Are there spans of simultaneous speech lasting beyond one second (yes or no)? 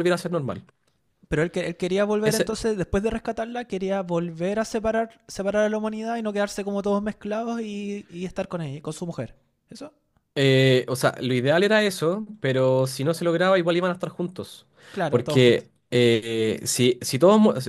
no